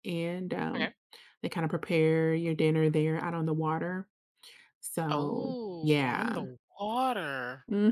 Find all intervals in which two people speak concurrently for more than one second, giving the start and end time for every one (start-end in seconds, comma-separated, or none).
5.1-6.5